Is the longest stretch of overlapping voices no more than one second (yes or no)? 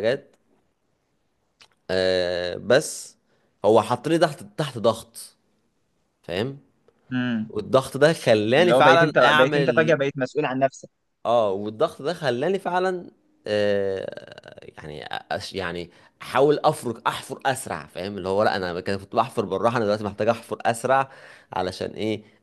no